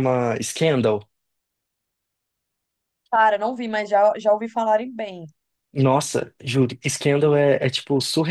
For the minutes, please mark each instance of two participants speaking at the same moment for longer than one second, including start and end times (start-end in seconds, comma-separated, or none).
none